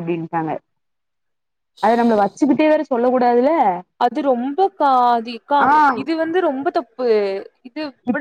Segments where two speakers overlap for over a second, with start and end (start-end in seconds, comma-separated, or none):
none